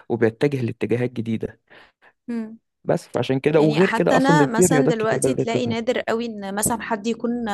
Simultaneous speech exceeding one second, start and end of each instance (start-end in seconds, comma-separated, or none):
3.6-5.8